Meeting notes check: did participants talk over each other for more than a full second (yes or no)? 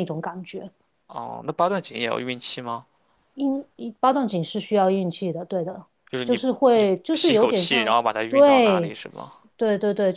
yes